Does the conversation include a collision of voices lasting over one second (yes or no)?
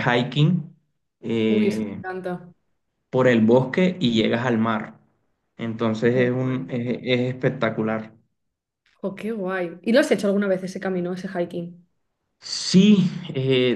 no